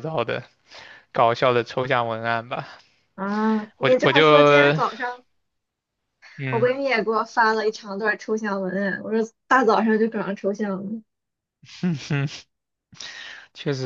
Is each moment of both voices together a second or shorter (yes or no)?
yes